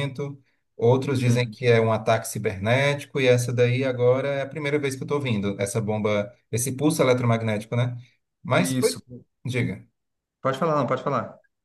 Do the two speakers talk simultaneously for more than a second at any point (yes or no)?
no